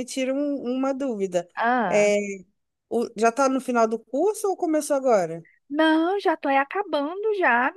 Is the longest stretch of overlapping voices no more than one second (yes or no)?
yes